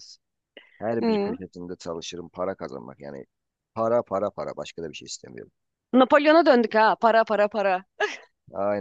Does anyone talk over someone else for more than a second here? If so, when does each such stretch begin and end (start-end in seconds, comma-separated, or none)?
none